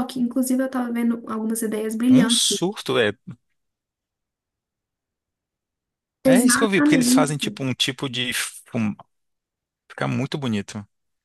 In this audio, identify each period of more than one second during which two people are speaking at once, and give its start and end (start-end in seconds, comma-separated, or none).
6.2-7.6